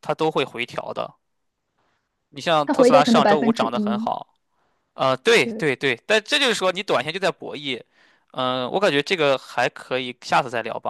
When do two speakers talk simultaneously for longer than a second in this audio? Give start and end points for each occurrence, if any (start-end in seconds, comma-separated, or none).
2.7-4.1